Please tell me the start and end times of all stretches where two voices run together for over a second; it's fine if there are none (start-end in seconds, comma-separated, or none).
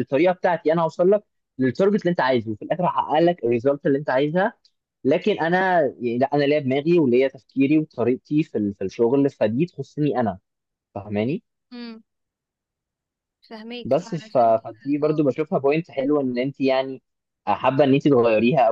13.8-15.2